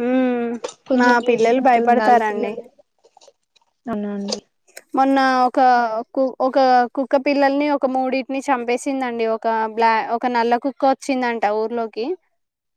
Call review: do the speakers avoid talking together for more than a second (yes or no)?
no